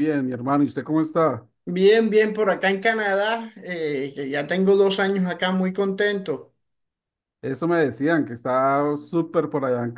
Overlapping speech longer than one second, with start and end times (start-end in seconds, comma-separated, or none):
none